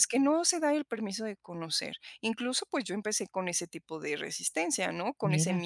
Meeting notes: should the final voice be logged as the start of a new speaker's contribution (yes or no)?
no